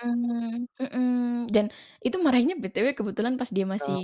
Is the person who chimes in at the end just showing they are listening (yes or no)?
yes